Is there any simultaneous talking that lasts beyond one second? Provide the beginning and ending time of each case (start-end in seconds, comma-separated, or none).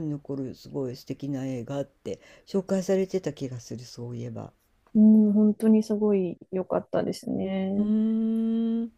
none